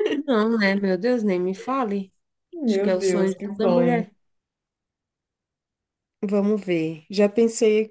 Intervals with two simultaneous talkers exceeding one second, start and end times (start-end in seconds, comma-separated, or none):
2.7-4.0